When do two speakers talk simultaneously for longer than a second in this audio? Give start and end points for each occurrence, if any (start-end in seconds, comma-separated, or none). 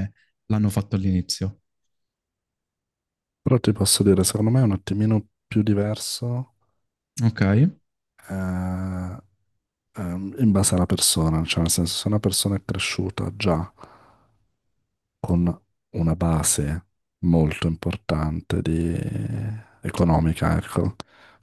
none